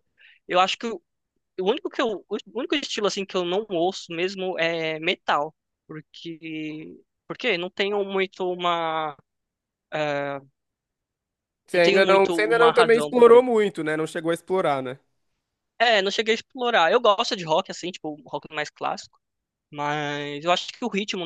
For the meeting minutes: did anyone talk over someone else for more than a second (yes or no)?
yes